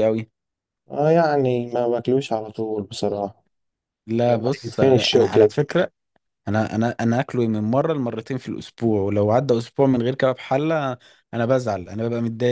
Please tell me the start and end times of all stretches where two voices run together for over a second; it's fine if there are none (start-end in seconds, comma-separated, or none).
4.2-5.6